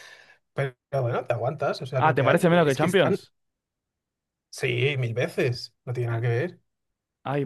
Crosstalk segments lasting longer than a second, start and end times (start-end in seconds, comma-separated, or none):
2.0-3.2